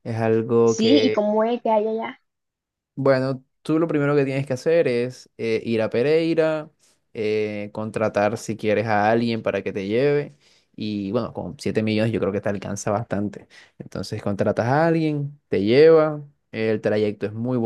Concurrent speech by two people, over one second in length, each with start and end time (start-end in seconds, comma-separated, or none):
none